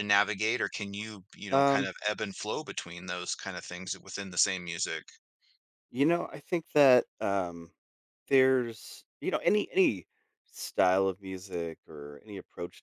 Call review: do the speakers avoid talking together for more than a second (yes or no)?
yes